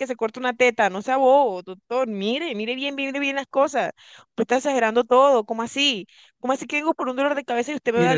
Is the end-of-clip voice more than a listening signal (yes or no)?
yes